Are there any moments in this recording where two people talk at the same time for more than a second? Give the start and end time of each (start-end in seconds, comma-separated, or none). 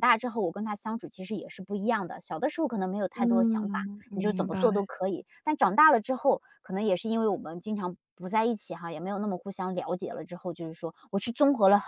3.1-4.8